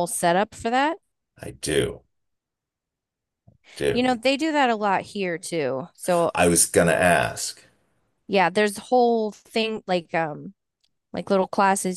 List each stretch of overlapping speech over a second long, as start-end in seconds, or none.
none